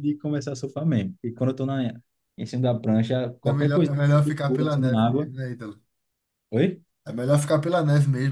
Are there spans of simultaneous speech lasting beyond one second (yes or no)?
yes